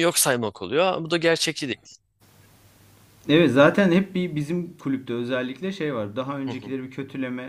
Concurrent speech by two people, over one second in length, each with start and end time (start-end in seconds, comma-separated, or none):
none